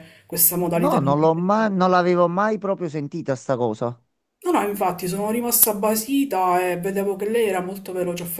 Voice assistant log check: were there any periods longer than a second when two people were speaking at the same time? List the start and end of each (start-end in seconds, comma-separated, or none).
none